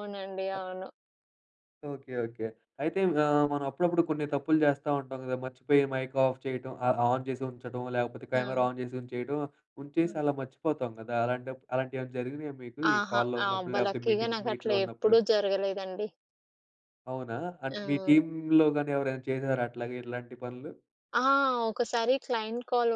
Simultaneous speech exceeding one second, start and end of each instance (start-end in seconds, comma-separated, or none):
12.9-15.2